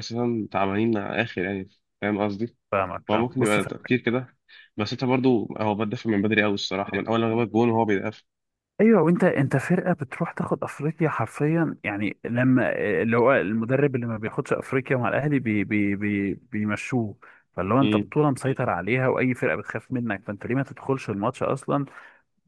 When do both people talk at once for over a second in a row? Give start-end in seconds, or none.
none